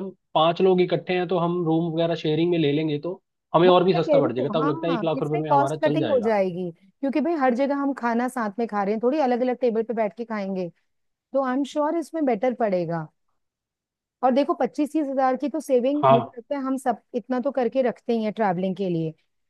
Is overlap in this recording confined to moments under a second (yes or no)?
no